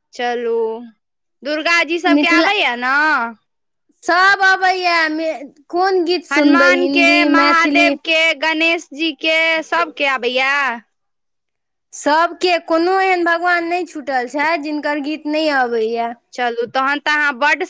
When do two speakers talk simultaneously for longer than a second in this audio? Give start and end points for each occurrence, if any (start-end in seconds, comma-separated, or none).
6.3-8.0